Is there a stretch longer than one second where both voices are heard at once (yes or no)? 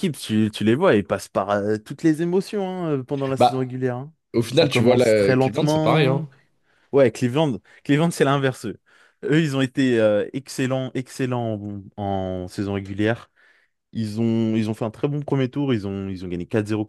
yes